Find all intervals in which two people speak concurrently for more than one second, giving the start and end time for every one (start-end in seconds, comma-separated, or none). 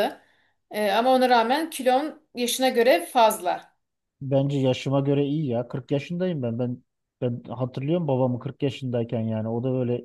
none